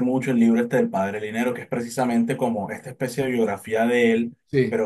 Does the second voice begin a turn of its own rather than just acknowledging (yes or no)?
no